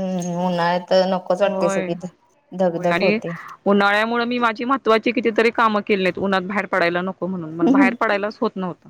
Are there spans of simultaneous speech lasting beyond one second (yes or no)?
no